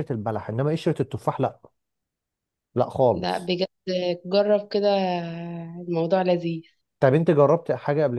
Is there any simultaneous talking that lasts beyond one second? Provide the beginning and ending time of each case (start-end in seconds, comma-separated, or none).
none